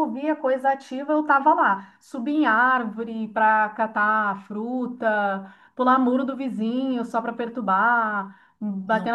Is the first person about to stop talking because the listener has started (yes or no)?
no